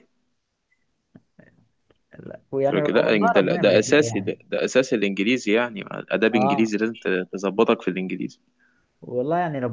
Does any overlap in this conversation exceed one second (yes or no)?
yes